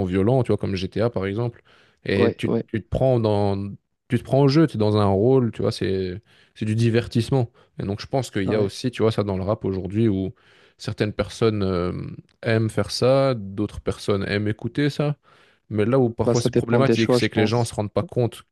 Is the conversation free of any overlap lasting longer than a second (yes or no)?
no